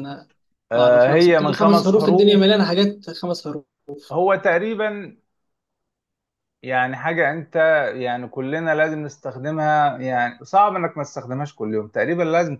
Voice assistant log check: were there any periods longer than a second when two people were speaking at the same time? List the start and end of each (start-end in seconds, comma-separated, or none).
0.8-2.6